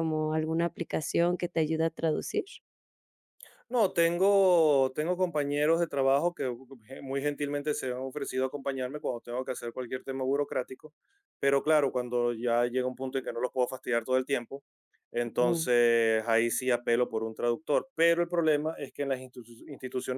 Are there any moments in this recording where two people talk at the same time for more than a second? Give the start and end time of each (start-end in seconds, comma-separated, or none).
none